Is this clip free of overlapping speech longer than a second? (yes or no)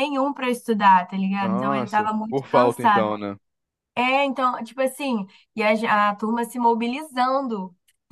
no